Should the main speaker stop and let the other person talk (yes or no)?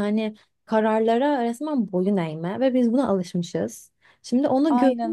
no